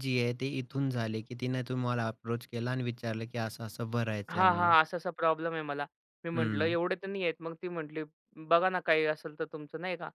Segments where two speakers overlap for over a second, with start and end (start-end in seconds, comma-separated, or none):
none